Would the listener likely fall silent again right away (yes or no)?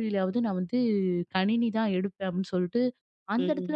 yes